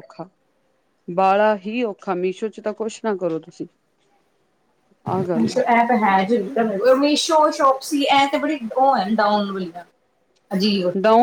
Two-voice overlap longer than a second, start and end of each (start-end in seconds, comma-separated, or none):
none